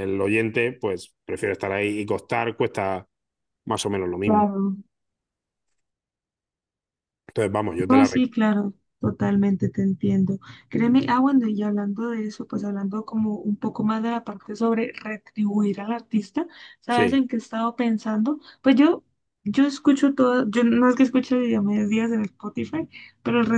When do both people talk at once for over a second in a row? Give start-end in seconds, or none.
none